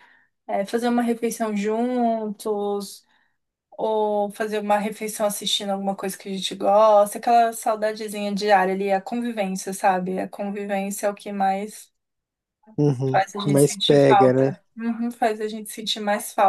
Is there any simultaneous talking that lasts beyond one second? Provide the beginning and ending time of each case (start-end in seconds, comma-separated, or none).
13.1-14.6